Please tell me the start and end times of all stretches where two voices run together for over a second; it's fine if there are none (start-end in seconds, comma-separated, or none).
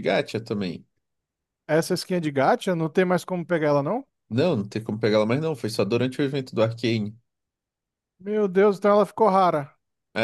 none